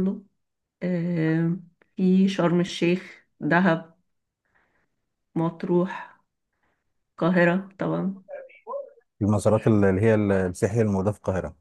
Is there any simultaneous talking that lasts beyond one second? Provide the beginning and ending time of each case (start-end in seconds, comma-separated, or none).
none